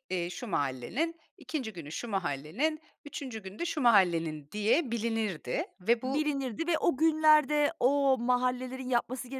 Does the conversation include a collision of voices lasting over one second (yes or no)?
no